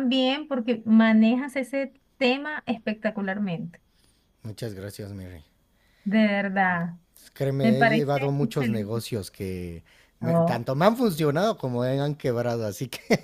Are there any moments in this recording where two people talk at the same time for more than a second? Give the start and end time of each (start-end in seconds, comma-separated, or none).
7.6-9.0